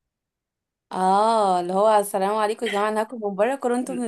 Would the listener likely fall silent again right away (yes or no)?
no